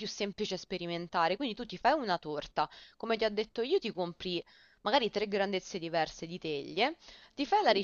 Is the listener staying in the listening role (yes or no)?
yes